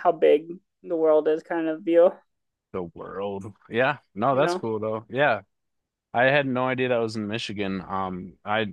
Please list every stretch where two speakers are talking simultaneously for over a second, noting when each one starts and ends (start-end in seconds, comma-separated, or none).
none